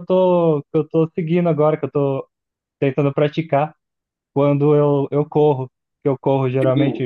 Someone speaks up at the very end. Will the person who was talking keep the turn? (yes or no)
yes